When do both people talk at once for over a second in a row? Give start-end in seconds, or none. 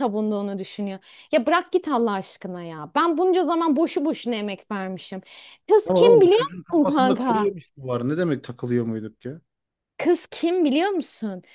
5.8-7.5